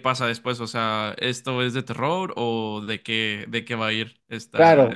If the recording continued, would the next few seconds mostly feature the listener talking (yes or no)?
yes